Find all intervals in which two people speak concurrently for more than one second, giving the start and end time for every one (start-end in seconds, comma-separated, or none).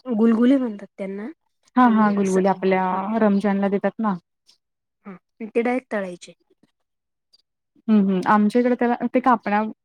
none